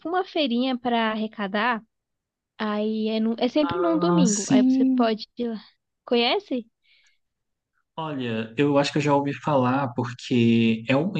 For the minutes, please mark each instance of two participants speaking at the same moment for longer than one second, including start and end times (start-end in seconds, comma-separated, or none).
3.6-5.1